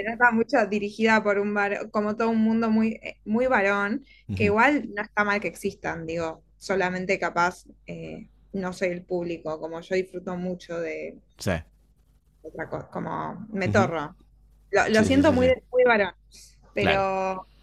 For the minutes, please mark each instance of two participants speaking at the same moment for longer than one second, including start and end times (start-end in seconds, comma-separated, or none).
none